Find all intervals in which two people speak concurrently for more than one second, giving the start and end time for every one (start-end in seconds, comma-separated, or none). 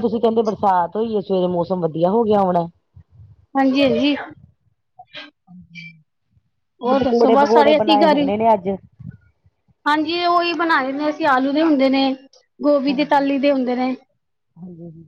7.0-8.3